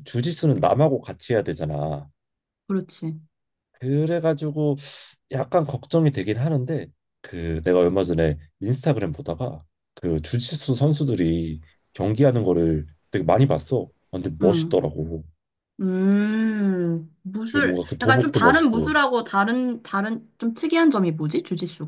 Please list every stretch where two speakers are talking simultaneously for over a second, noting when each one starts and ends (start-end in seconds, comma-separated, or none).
17.4-18.9